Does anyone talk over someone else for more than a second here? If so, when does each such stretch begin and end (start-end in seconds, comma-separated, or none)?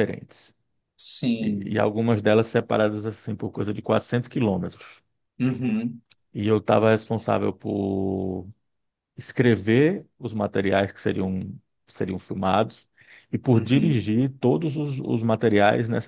none